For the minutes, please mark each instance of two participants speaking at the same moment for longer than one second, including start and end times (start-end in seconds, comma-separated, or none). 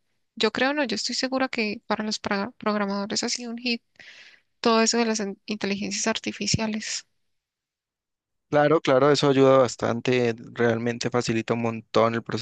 none